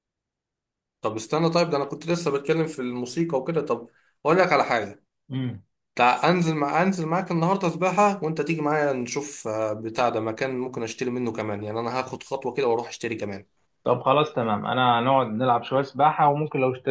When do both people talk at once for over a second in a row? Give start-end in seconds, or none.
none